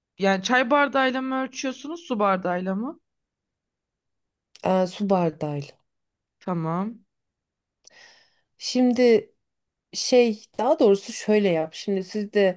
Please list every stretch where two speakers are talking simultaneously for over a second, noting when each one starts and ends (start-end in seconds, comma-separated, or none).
none